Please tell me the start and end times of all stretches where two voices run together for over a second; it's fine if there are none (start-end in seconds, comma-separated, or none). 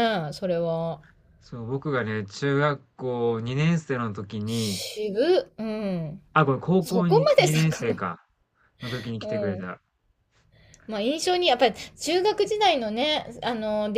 6.8-8.1